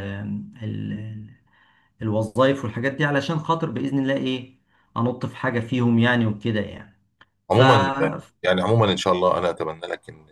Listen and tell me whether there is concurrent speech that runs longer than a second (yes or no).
no